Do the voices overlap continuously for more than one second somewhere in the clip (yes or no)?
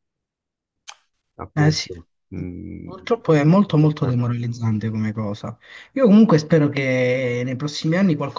no